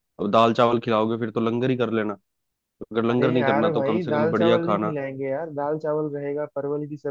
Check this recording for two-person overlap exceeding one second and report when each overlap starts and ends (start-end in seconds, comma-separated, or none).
3.1-5.0